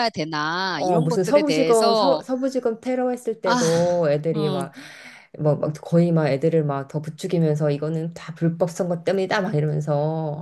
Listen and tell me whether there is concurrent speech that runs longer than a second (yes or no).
yes